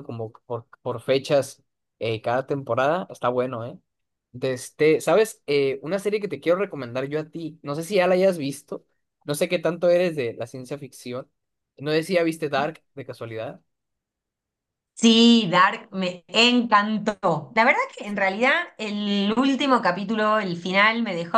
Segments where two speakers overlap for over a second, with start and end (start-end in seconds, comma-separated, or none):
none